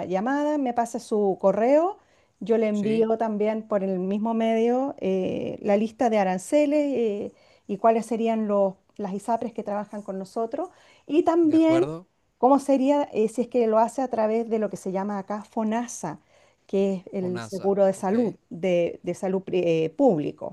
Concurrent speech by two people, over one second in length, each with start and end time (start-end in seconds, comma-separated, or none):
17.2-18.4